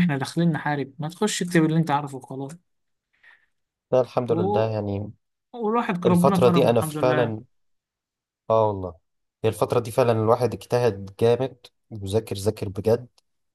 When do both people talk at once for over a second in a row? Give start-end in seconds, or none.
6.0-7.4